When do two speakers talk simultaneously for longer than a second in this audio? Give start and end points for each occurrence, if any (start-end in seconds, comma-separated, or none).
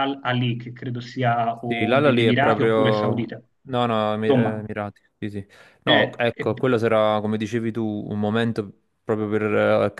1.6-3.4